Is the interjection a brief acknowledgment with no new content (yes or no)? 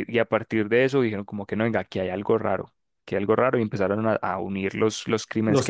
yes